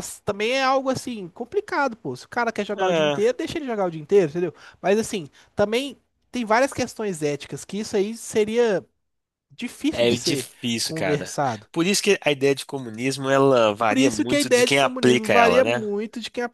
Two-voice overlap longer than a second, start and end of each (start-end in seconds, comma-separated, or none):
9.9-11.4, 13.9-15.9